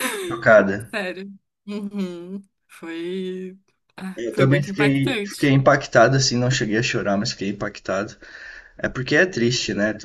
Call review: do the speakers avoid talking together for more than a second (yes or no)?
no